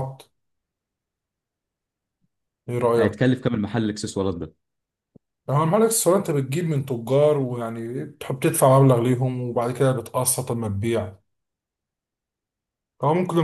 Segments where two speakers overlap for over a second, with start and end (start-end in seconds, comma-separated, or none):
none